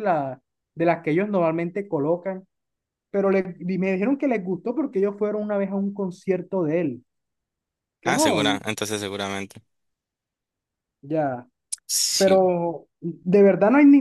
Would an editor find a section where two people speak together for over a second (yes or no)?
no